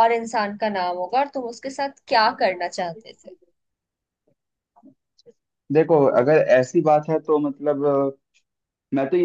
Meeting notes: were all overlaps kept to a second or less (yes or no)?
yes